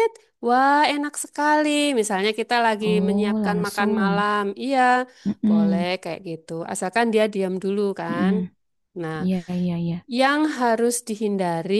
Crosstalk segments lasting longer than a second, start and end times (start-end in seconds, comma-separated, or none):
2.8-4.2